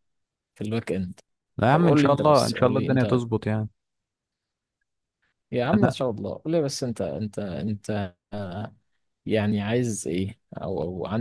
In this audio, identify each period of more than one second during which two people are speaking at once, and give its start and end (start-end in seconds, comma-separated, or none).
1.7-3.2